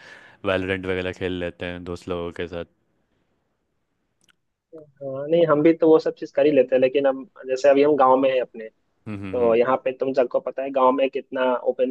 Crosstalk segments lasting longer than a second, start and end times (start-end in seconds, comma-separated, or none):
none